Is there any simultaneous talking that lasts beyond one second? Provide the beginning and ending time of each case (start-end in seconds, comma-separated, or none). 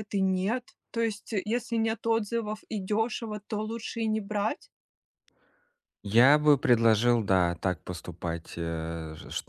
none